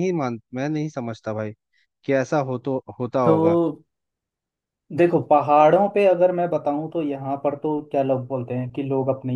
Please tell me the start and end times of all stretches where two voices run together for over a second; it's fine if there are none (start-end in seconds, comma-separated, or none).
none